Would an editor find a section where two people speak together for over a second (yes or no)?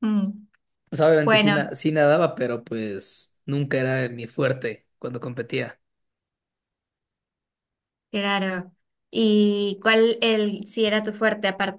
no